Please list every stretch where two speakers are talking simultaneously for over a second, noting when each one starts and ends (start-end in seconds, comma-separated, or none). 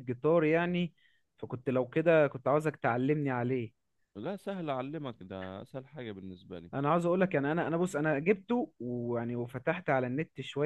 none